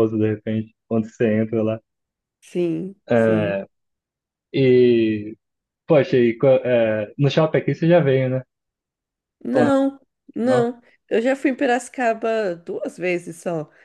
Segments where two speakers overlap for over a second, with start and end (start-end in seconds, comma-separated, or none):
none